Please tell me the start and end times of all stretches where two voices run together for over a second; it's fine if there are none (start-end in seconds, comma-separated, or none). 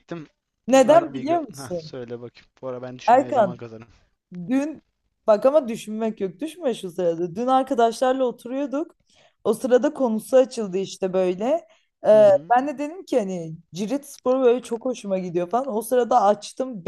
0.7-1.9